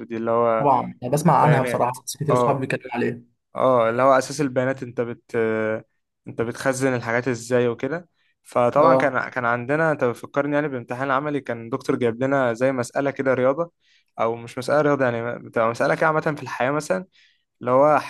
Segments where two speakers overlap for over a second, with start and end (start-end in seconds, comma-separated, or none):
1.3-2.7